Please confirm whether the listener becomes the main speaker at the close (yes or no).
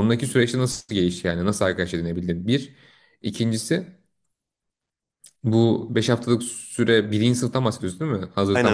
yes